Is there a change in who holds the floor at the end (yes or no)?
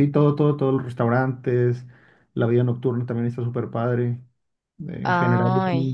no